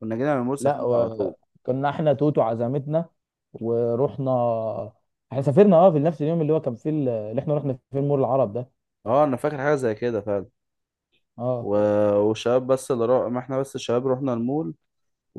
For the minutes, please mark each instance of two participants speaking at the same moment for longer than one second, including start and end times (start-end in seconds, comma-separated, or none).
none